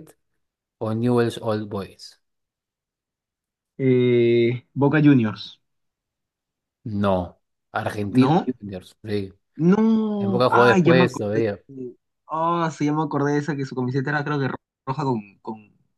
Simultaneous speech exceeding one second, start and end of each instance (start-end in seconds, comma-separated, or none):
10.2-11.4